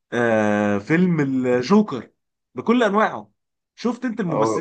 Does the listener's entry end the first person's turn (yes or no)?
no